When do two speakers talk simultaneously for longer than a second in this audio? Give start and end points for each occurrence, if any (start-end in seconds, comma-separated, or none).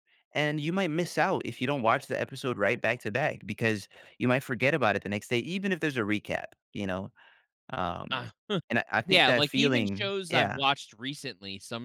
9.1-10.6